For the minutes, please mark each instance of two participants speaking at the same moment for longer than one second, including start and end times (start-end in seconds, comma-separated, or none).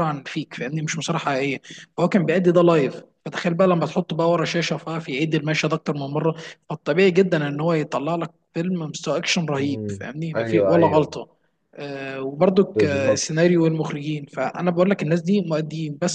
9.6-11.2